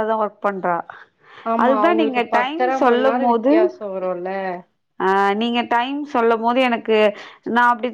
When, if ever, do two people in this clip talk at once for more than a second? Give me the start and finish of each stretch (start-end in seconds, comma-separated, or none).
1.6-3.5